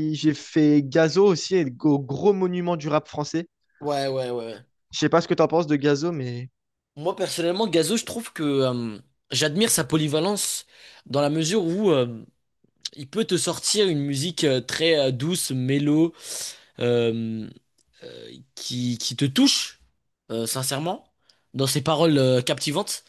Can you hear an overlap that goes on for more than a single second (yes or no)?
no